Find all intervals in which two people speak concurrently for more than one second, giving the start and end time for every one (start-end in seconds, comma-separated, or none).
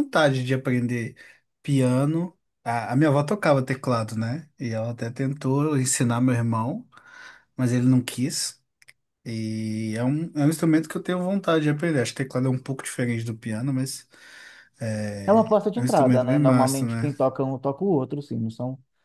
15.2-17.1